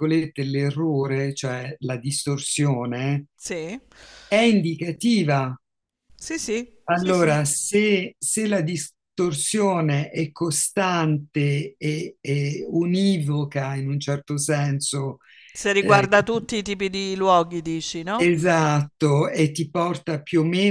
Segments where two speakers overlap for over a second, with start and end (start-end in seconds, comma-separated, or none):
none